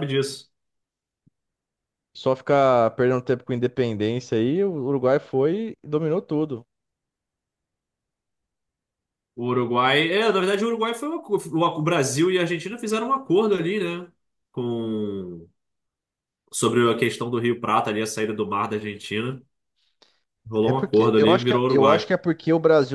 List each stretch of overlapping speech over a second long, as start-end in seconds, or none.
20.6-22.1